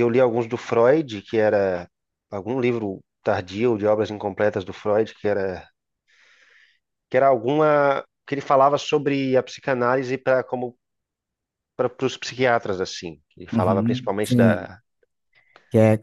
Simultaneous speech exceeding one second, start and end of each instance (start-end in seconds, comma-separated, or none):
13.5-14.7